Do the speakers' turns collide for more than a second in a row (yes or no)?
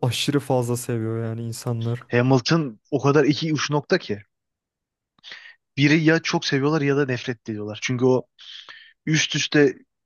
no